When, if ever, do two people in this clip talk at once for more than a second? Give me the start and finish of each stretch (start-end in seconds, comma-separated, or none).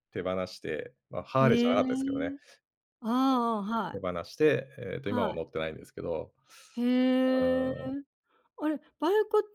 none